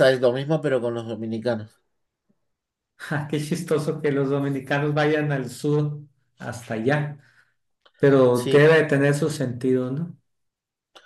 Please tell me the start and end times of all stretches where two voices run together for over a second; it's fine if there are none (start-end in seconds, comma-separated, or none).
none